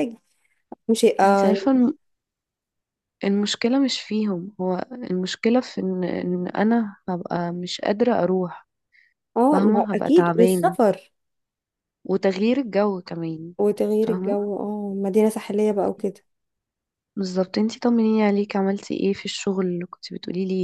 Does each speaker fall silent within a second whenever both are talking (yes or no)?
no